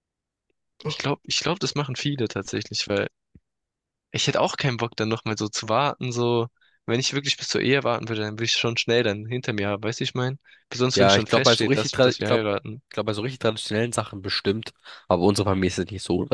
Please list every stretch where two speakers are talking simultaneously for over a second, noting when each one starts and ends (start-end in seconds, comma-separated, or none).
10.9-12.4